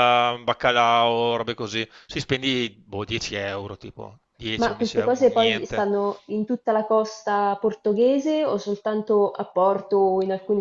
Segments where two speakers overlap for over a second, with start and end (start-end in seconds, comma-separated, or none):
4.6-5.9